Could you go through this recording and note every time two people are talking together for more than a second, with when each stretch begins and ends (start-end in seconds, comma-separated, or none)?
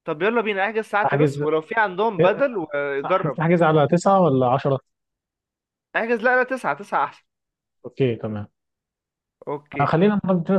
none